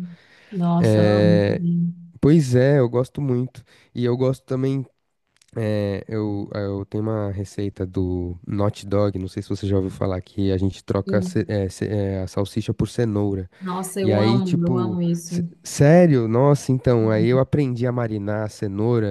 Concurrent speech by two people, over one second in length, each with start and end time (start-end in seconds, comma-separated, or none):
14.0-15.4